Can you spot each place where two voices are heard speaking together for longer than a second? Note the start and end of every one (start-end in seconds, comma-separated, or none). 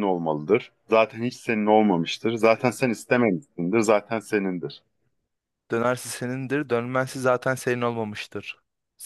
none